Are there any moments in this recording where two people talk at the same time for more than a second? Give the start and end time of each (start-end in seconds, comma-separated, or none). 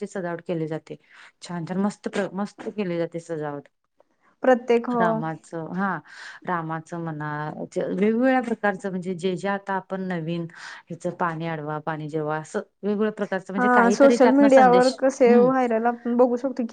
none